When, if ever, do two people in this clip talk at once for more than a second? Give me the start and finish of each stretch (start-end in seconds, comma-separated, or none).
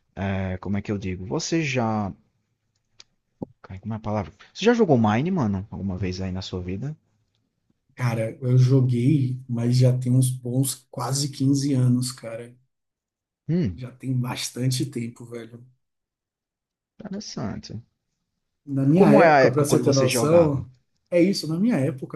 19.0-20.6